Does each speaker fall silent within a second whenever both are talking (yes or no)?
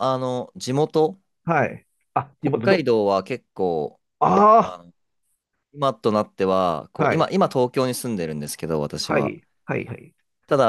yes